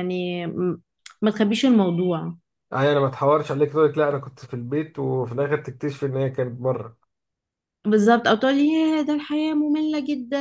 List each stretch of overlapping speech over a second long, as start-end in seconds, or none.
none